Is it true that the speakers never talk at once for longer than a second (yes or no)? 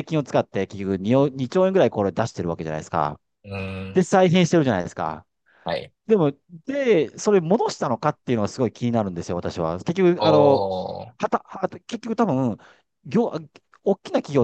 yes